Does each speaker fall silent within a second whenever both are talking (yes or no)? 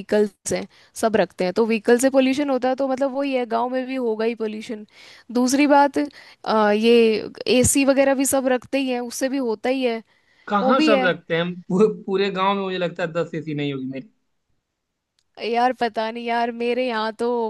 yes